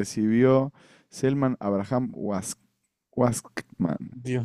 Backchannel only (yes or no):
no